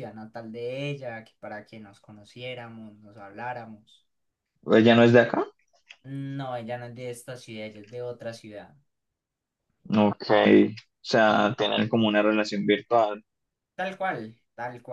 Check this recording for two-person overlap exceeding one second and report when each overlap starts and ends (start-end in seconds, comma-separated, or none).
none